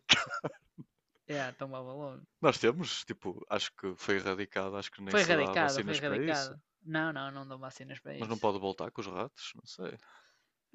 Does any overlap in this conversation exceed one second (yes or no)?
yes